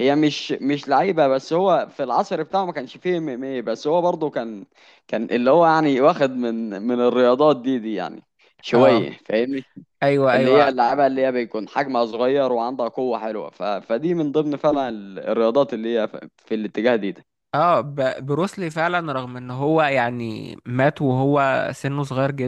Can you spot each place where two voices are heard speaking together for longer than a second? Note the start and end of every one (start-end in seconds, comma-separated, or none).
none